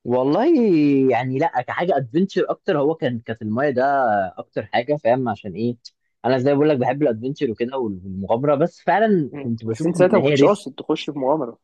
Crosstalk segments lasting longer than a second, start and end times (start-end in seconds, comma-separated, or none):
9.3-10.6